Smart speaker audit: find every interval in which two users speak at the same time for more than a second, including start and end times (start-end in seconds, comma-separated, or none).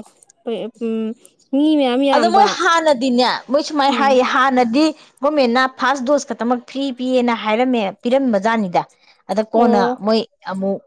none